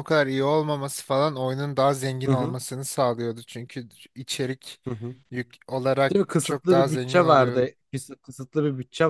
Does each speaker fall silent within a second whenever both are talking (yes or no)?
no